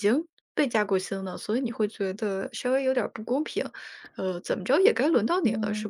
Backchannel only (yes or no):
no